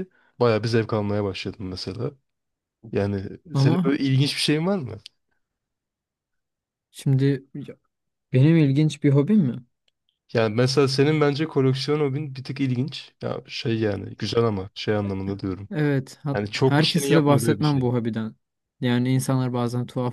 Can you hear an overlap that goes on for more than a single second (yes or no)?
yes